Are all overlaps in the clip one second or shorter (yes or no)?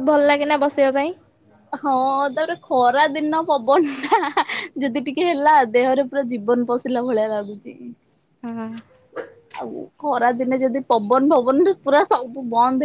yes